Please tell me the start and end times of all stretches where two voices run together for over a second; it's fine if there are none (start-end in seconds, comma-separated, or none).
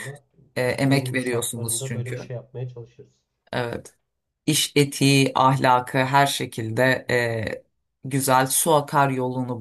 0.6-2.3